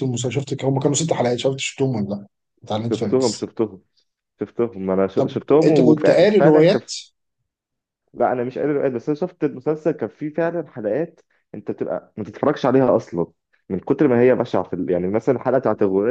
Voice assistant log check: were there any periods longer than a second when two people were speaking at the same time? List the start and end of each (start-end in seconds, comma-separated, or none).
5.2-6.9